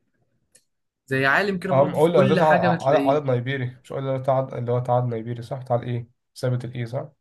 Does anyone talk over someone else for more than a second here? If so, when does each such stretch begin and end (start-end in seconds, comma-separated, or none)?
1.7-3.2